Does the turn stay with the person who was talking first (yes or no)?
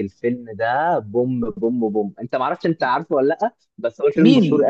no